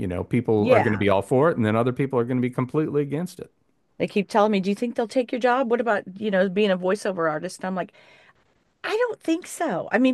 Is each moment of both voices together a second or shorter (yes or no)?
yes